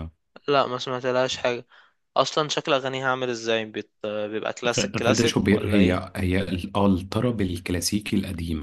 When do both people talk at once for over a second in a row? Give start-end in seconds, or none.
4.7-6.0